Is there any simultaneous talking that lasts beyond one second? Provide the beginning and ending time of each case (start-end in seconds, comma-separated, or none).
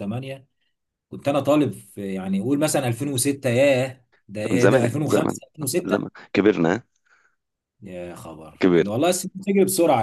4.5-6.1